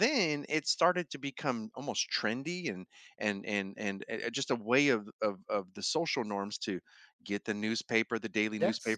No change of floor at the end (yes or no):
yes